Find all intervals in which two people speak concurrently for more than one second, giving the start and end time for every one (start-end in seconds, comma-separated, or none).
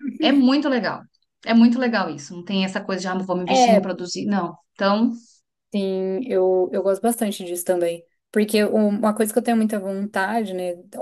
none